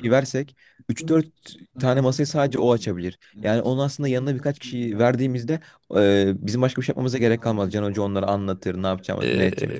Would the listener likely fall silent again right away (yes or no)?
no